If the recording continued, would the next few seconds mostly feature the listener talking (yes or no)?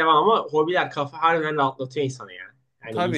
yes